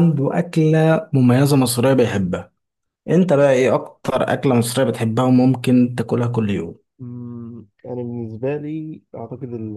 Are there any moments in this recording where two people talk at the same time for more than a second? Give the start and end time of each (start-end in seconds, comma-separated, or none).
none